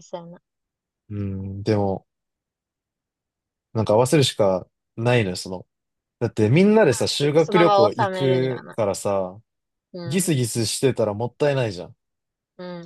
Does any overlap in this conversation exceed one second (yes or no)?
yes